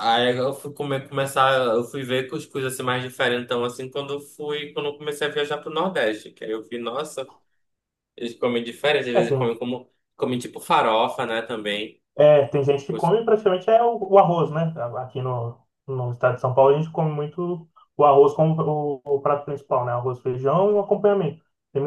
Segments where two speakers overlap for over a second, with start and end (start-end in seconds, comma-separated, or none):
none